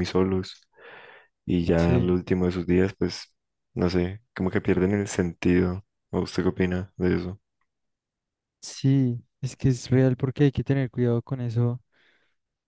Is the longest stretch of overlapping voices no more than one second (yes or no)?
yes